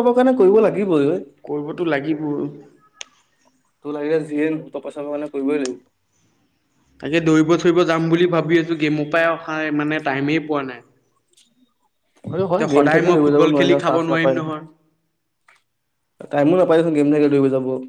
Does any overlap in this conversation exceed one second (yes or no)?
yes